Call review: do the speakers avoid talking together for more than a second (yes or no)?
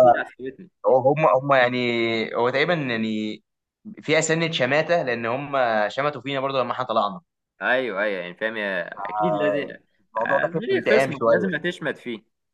no